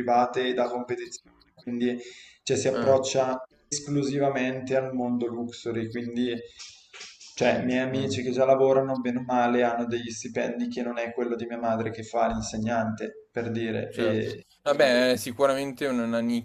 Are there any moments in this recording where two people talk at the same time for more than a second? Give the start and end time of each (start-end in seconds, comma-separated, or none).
none